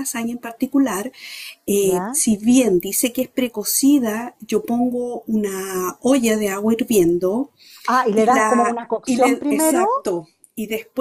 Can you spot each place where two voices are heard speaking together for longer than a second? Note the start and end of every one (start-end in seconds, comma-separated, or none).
8.2-9.8